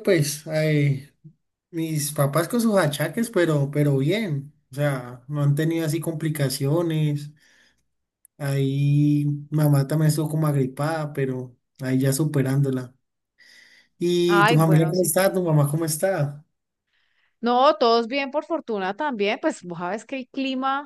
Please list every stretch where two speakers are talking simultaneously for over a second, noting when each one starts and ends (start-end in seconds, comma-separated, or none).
14.3-15.5